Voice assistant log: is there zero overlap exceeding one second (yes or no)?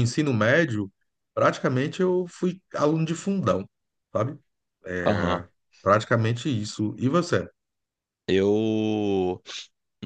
yes